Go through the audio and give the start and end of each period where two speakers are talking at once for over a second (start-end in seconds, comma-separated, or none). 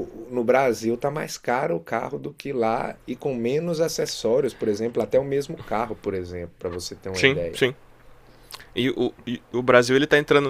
none